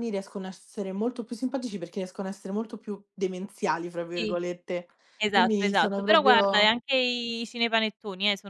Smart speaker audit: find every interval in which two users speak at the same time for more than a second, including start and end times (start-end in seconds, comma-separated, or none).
5.3-6.7